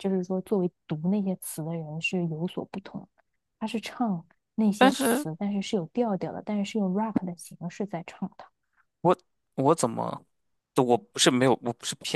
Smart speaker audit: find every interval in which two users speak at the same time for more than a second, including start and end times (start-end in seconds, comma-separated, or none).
none